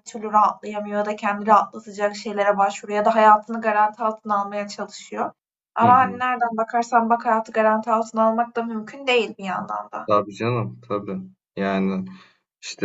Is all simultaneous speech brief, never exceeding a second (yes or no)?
yes